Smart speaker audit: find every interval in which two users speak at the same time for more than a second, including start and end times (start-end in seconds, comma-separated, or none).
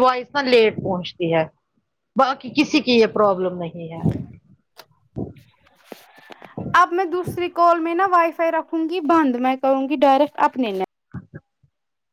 none